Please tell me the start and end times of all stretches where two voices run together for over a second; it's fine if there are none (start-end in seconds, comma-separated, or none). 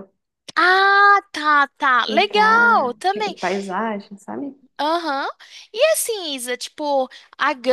2.1-3.3